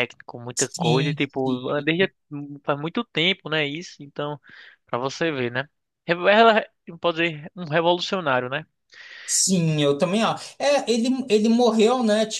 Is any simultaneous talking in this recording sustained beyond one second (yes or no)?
yes